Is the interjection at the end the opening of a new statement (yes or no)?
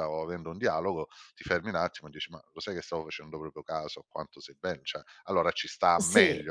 yes